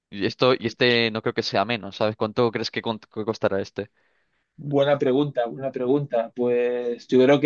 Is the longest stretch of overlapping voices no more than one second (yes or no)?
yes